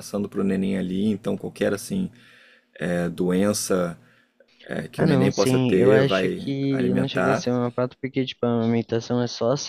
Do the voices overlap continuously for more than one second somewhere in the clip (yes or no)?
yes